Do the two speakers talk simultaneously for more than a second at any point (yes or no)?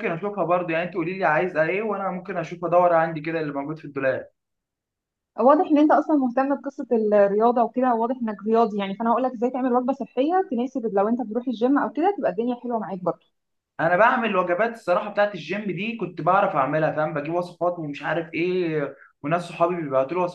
no